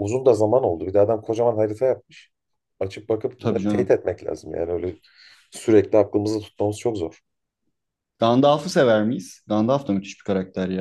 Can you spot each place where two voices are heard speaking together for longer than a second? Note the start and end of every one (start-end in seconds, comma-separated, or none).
none